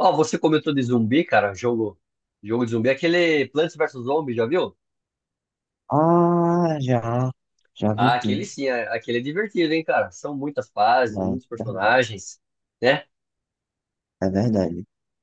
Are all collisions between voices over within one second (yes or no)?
yes